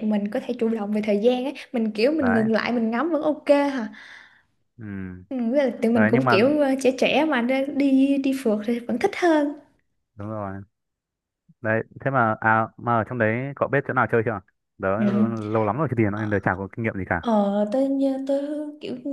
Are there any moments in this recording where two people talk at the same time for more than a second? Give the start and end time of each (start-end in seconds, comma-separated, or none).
none